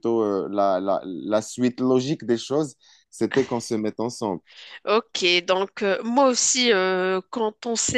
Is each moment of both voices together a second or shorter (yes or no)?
yes